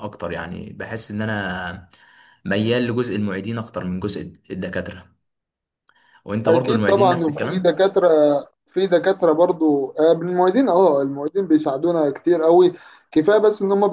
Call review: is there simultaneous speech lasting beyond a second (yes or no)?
yes